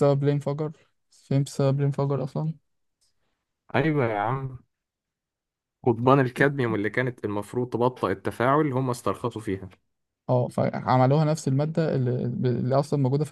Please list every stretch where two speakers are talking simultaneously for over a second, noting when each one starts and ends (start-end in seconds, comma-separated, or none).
none